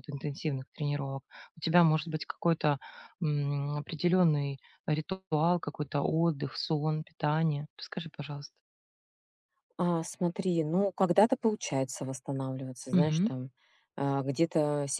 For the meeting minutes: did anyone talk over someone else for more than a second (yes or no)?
no